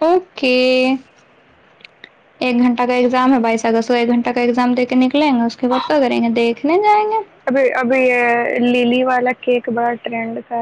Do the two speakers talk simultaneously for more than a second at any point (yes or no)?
no